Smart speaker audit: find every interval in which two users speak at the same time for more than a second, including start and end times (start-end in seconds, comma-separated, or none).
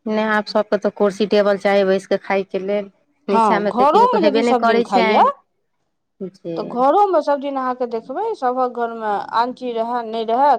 3.3-5.2